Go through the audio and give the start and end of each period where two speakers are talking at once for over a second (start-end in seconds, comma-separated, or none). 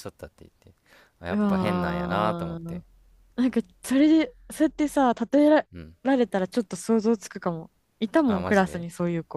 1.3-2.8